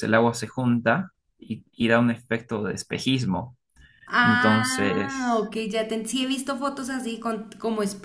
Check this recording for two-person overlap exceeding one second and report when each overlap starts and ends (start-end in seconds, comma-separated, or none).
4.2-5.5